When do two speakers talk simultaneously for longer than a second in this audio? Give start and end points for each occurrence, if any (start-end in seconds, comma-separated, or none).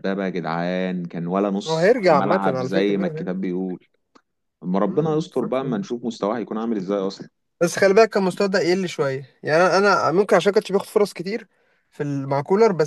1.6-3.4